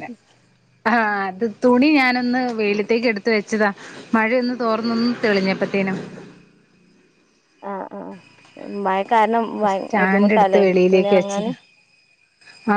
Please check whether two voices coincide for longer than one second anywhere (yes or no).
yes